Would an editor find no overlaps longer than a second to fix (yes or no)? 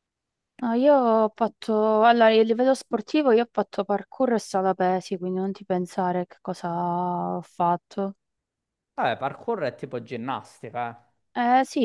yes